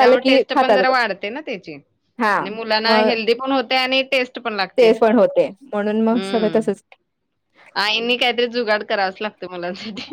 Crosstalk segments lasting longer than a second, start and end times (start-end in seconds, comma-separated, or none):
none